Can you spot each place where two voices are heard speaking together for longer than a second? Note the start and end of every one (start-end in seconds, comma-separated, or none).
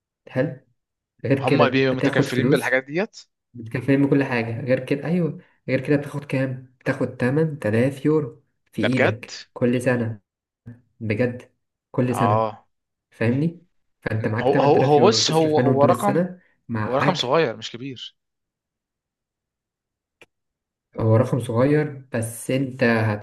1.4-2.8, 14.4-16.2